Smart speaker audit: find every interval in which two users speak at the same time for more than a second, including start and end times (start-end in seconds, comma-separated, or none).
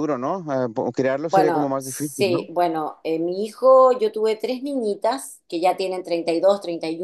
1.3-2.5